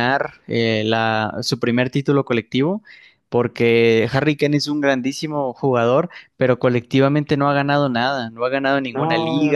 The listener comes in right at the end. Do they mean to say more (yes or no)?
no